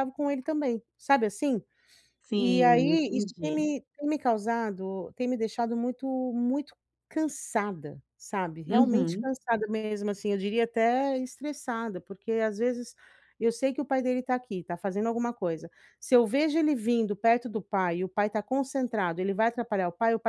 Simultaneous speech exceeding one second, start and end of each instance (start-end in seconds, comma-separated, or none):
2.3-3.6